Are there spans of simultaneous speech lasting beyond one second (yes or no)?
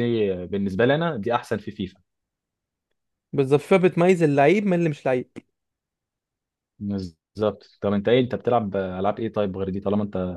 no